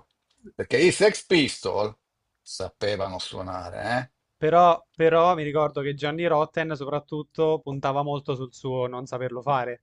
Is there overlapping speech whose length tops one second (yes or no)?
no